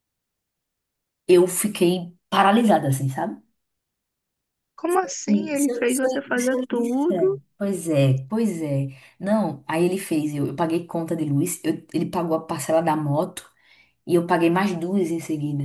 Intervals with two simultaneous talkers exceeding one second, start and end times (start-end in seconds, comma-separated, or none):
5.3-7.4